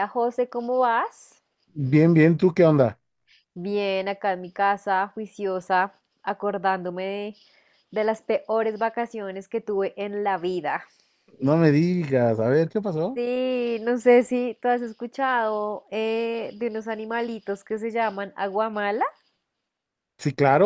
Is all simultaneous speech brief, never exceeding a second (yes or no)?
yes